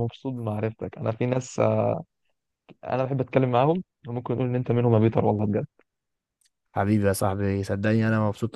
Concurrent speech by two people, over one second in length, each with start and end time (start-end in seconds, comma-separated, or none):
none